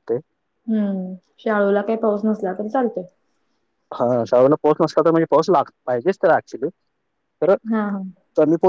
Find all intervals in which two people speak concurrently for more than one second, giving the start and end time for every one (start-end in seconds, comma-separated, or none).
none